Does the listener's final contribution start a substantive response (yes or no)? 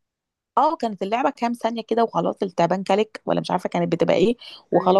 no